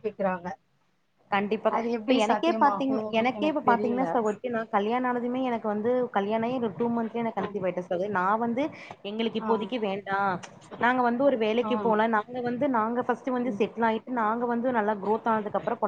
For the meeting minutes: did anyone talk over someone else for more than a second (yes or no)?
yes